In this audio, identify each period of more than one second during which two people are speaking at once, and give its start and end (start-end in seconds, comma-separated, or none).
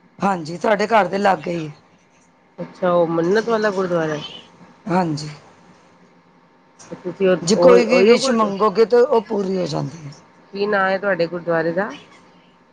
7.4-8.7